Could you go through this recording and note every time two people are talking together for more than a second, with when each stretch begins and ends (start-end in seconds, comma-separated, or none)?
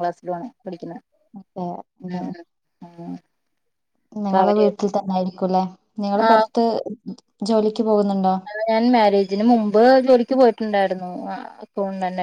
none